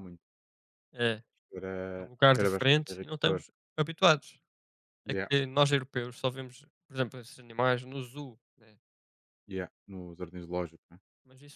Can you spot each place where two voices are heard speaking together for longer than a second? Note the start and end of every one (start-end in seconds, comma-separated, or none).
2.0-3.4